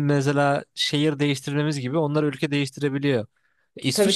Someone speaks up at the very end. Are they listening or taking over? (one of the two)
listening